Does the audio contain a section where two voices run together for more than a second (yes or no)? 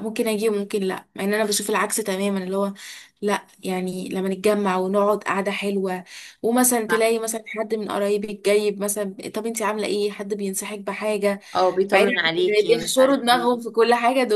yes